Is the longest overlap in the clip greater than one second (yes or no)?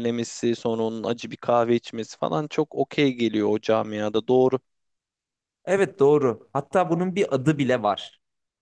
no